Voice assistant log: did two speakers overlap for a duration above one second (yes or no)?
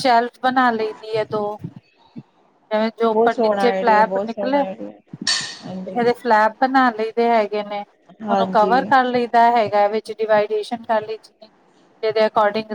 yes